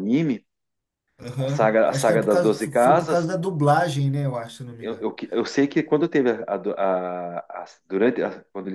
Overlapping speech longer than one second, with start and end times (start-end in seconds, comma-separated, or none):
1.4-3.3